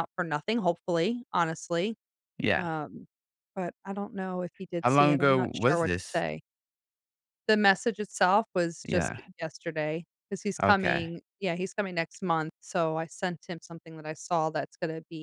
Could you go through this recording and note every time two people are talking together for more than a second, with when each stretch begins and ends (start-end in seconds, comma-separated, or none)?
4.8-6.2